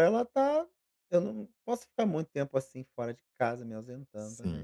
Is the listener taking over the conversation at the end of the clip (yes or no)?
yes